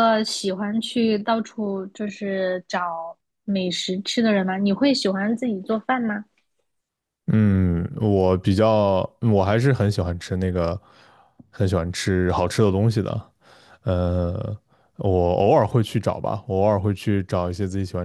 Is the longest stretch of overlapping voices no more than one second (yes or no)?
yes